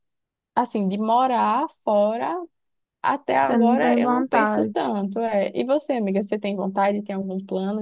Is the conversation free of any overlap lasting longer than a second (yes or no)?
no